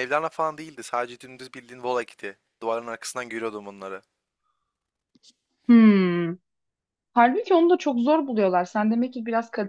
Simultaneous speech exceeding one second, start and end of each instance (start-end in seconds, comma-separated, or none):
none